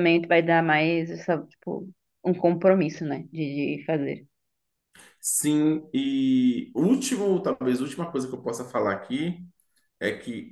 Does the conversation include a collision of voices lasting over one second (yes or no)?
no